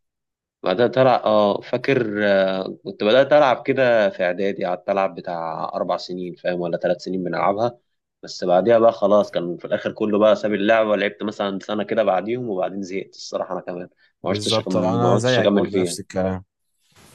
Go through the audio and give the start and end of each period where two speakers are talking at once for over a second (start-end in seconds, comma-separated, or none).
14.2-16.0